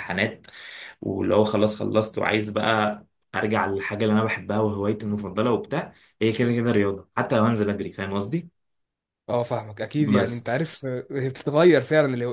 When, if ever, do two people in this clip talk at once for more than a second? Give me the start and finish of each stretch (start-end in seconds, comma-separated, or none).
none